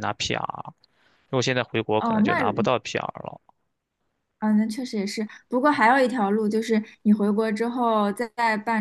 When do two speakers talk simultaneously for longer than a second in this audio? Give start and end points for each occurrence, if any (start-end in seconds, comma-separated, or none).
none